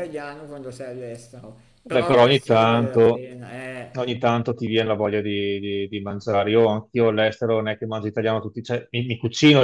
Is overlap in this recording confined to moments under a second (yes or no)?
no